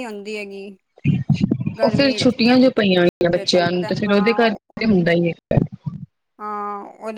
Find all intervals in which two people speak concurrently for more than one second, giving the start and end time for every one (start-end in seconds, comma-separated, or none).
3.3-4.9